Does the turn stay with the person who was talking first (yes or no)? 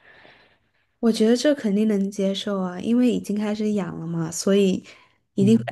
yes